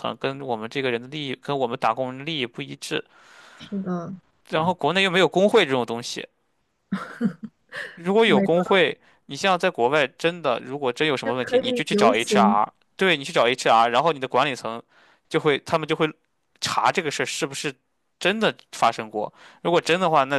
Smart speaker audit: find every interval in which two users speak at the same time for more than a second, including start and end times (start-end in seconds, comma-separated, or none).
11.2-12.6